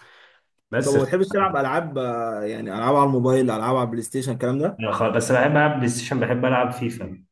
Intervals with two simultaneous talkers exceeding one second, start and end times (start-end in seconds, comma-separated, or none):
none